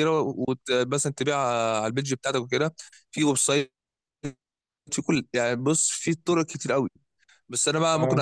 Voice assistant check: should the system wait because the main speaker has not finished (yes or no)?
yes